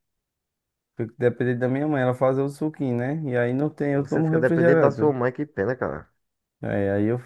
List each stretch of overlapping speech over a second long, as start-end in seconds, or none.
3.9-5.1